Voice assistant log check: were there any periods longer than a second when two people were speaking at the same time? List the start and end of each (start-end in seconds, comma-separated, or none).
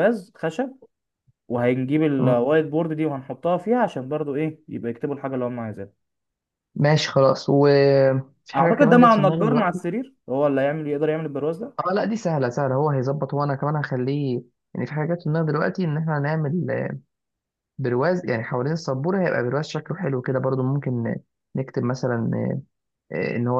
8.6-9.8